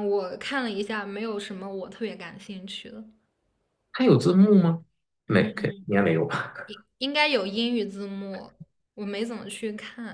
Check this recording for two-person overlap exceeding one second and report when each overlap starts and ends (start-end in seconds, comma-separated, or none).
none